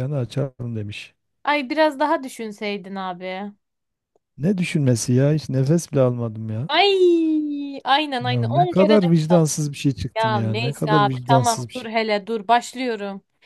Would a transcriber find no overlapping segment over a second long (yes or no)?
no